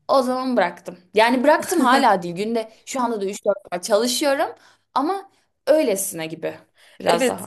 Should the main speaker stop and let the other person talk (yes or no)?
yes